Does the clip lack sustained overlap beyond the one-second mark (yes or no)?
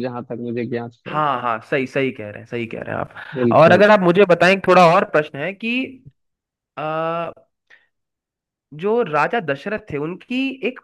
yes